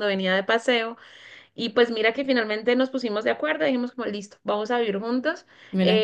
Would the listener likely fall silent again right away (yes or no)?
yes